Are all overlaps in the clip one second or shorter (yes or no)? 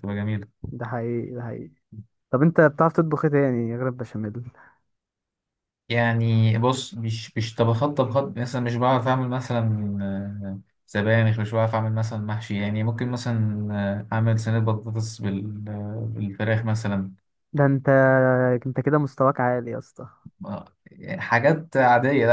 yes